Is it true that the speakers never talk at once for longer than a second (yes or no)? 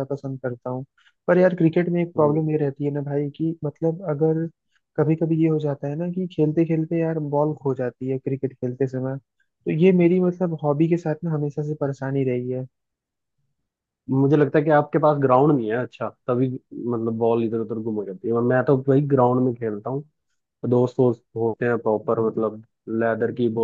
yes